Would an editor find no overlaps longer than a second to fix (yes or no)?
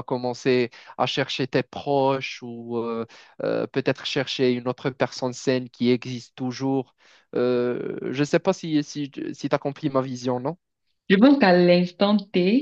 yes